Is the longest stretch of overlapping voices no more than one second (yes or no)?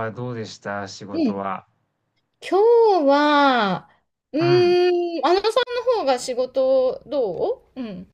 yes